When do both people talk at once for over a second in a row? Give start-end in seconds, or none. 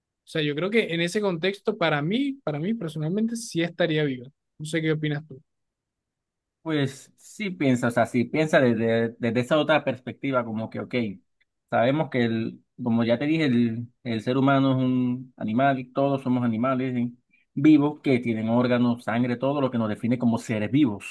none